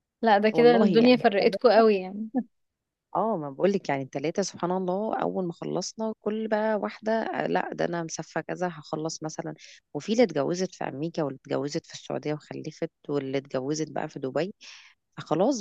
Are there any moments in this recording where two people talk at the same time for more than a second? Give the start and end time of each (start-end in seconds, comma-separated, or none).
0.5-1.8